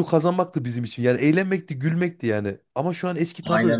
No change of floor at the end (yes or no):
yes